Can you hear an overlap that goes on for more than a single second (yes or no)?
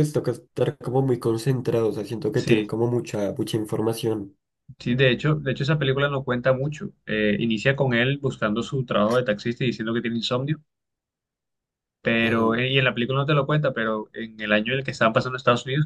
no